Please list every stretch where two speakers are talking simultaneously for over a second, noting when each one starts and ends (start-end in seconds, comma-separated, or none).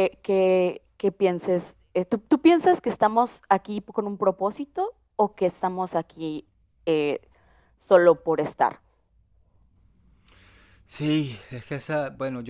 none